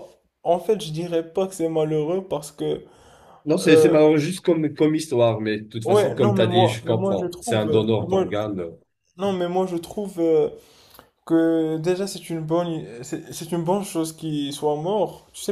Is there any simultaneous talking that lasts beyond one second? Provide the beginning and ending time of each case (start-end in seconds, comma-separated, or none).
5.8-8.2